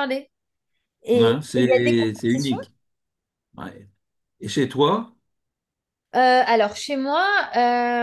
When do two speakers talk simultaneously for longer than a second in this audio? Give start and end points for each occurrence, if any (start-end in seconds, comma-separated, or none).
1.1-2.6